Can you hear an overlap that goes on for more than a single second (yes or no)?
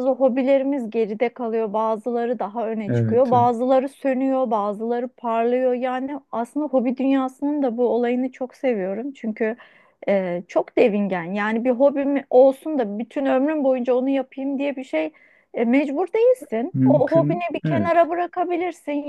yes